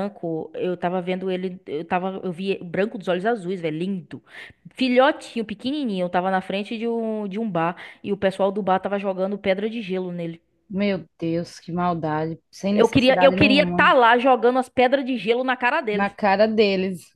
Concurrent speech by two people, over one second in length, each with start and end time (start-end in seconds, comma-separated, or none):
12.7-13.9